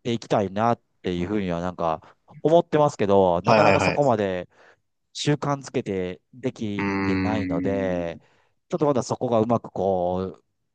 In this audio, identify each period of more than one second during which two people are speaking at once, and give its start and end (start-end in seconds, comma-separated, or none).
6.8-8.1